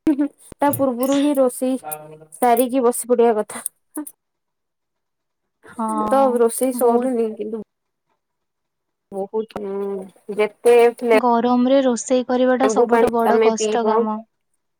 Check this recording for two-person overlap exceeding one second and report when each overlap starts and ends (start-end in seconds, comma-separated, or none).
none